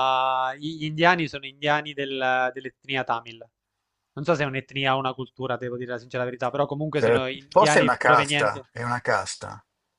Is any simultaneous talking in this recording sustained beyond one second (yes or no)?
yes